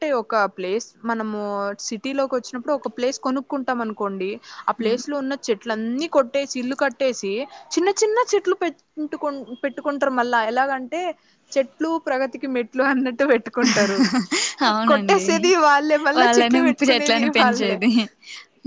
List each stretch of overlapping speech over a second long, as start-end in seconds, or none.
16.2-17.8